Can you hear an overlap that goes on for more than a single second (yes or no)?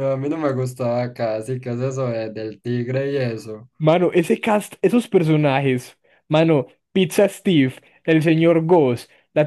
no